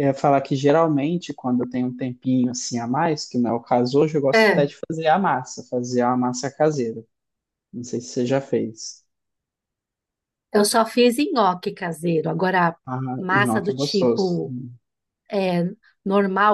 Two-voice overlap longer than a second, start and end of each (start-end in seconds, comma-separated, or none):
13.2-14.4